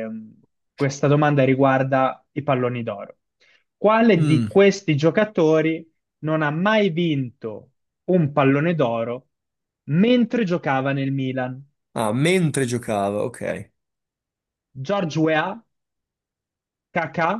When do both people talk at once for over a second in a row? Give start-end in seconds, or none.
none